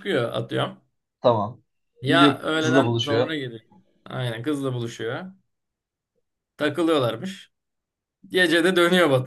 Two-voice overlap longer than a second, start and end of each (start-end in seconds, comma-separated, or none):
2.1-3.4